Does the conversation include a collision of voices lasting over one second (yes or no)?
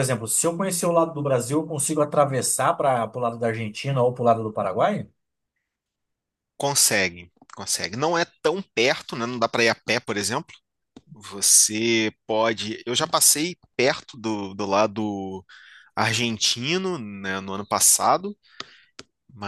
no